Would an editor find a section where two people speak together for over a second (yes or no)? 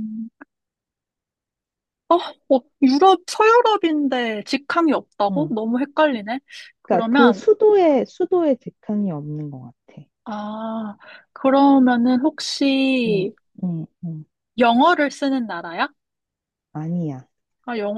no